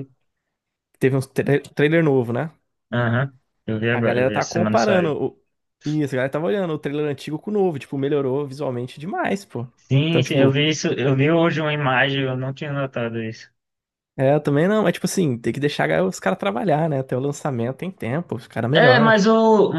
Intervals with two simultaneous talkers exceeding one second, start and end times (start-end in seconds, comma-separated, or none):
3.9-5.2